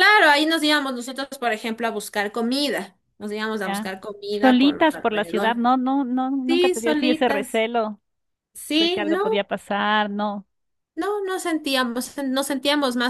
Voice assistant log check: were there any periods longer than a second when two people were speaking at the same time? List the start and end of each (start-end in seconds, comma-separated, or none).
3.6-5.6, 6.5-7.7